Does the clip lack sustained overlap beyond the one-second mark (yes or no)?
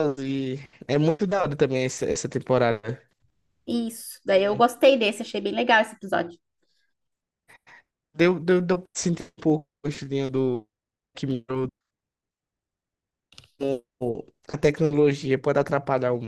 yes